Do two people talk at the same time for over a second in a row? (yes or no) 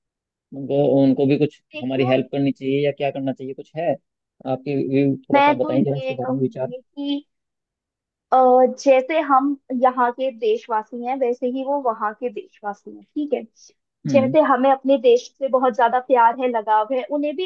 yes